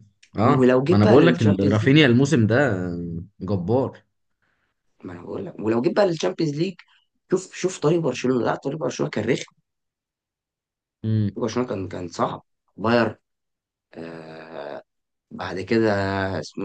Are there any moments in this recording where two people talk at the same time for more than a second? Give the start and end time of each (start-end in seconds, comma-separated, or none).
0.6-1.9